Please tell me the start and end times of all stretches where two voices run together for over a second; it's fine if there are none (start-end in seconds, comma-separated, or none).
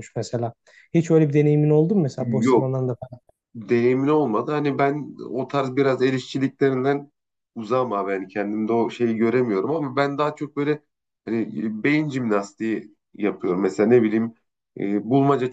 none